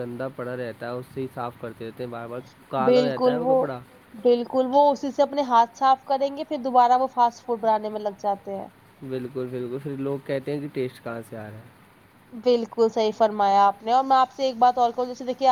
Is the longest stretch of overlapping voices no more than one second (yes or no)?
yes